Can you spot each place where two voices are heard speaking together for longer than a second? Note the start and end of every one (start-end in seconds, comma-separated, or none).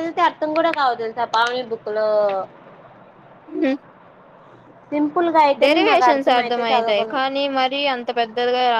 5.6-7.2